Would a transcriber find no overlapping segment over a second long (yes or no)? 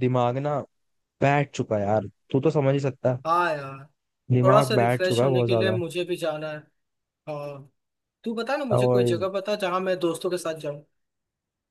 no